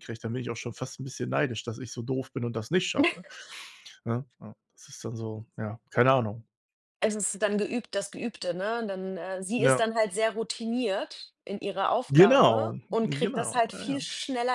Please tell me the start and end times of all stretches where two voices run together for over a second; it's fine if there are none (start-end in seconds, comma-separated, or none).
12.1-14.0